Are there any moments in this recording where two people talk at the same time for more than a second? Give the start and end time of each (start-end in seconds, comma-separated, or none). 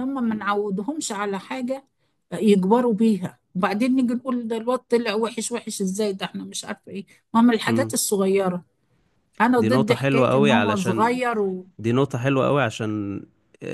9.6-11.2